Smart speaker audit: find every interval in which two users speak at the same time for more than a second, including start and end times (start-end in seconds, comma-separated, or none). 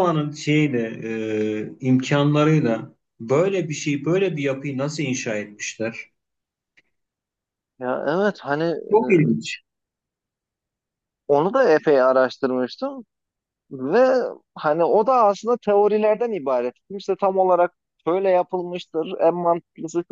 none